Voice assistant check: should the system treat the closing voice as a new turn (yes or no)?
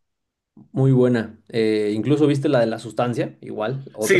yes